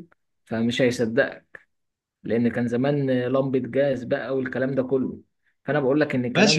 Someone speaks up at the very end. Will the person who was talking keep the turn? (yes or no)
no